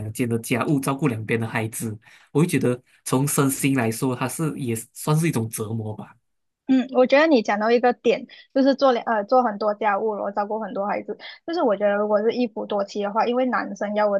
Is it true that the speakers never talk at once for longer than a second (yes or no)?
yes